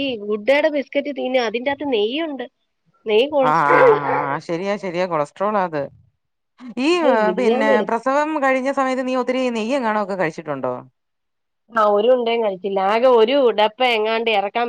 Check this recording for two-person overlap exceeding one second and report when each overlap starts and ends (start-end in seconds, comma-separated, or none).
none